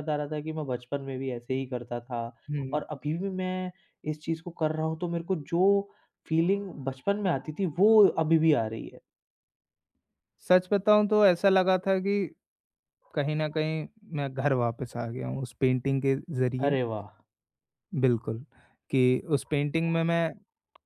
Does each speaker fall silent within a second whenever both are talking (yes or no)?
yes